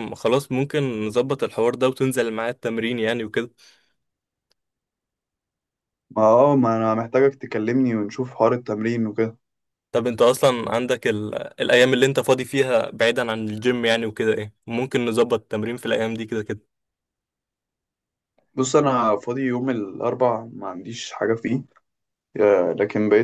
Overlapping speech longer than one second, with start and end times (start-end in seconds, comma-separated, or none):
none